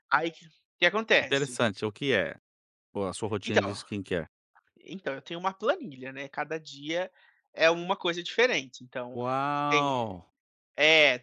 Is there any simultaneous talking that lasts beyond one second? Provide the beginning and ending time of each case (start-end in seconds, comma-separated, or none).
none